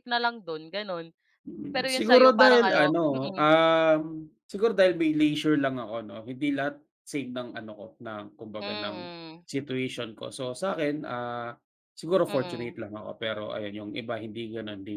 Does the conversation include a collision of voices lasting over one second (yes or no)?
yes